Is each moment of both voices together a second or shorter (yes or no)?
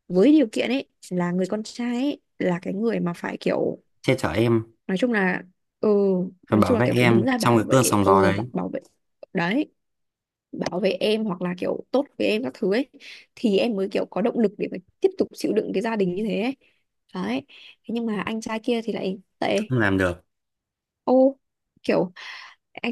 no